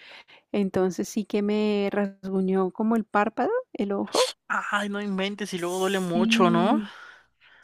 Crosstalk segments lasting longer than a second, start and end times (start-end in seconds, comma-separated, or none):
5.5-6.8